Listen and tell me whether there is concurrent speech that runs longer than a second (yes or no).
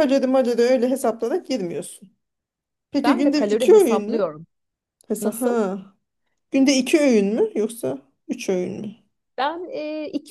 yes